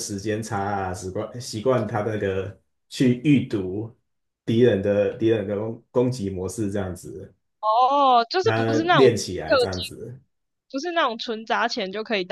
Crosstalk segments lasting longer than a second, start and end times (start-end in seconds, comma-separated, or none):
8.4-9.9